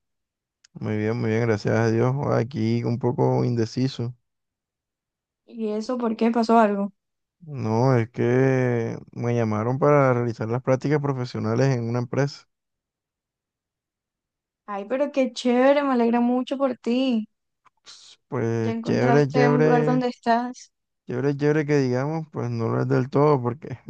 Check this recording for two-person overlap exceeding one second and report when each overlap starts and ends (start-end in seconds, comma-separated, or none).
18.6-20.0